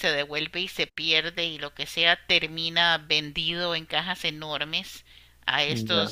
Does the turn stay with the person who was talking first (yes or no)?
yes